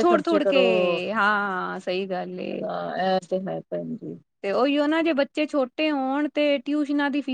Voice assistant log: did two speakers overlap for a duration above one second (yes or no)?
no